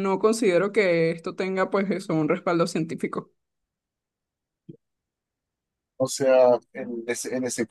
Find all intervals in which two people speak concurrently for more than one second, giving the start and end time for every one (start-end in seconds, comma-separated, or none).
none